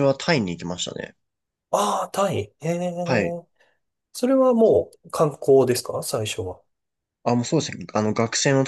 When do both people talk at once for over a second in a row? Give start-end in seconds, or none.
none